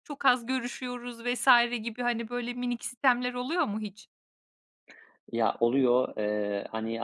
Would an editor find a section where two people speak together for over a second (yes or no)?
no